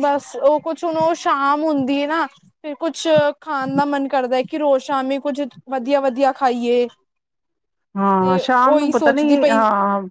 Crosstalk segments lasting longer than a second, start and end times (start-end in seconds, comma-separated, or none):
8.2-9.6